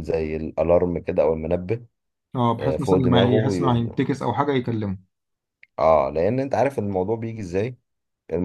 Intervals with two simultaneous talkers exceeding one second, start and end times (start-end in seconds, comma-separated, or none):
2.6-4.0